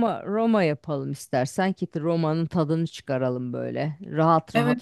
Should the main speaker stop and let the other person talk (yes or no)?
no